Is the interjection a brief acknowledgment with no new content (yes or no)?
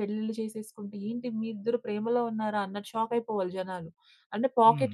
yes